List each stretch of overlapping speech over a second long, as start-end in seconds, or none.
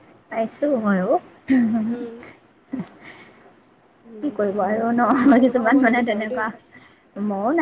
4.2-6.4